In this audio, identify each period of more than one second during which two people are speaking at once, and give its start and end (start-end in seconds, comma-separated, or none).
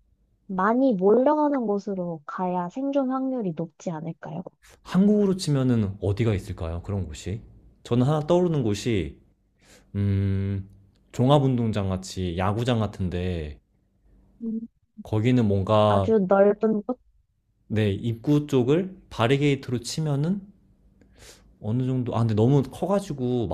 none